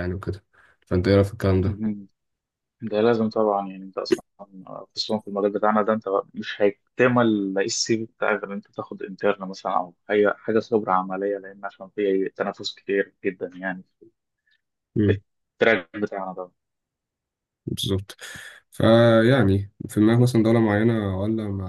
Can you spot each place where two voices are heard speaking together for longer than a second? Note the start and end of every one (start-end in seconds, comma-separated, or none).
none